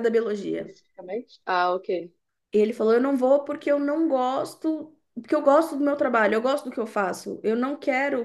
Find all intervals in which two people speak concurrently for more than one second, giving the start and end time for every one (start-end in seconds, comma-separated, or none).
none